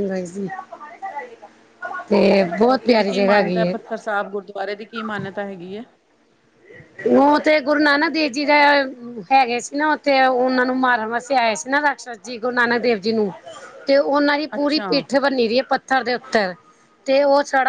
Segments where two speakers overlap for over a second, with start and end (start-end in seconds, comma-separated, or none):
none